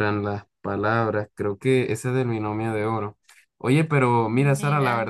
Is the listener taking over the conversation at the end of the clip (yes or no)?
no